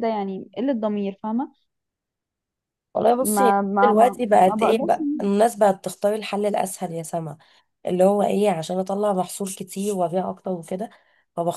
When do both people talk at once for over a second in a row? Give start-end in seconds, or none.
3.2-5.5